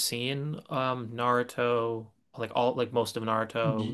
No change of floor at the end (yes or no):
no